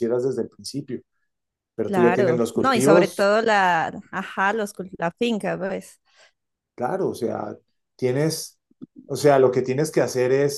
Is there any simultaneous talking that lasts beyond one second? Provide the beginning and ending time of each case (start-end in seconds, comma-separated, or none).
1.9-3.3